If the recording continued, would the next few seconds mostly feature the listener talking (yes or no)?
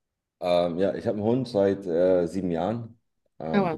no